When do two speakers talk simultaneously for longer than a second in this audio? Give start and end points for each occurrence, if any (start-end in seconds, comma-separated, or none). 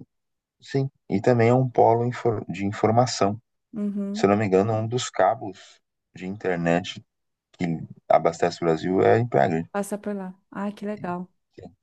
none